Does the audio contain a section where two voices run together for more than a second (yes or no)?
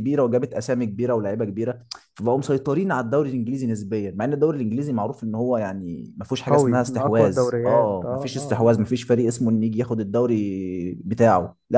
yes